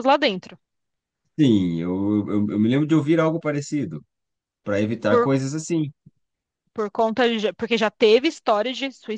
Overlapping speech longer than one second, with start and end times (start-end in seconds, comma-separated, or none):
none